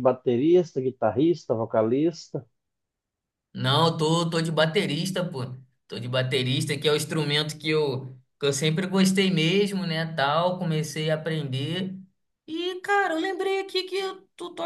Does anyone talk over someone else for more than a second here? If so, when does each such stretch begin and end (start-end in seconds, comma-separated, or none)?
none